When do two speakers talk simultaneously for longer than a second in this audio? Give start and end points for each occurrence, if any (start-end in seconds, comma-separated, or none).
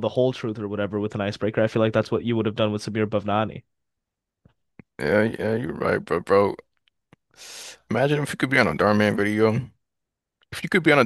none